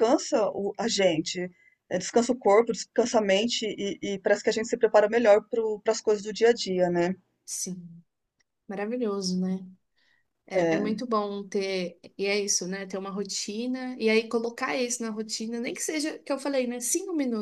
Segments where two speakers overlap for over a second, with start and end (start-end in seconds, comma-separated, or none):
none